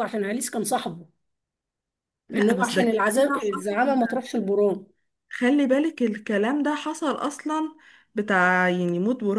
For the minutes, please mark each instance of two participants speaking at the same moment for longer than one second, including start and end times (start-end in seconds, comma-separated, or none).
2.4-3.7